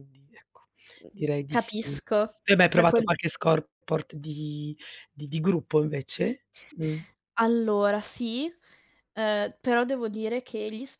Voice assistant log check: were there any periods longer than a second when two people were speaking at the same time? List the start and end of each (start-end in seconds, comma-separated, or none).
none